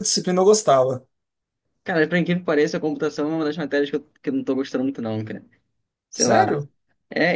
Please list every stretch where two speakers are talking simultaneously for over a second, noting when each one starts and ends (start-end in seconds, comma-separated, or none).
none